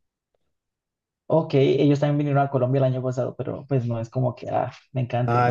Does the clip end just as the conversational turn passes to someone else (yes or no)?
yes